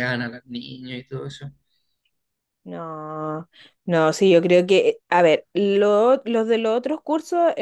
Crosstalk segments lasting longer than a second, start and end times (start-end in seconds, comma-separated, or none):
none